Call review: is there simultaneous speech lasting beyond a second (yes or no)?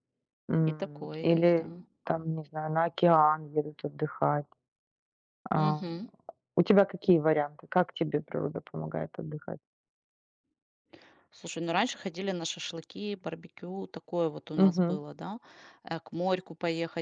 yes